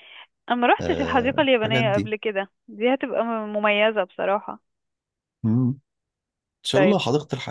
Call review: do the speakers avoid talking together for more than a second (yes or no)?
no